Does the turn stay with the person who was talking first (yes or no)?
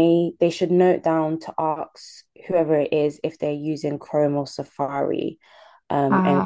yes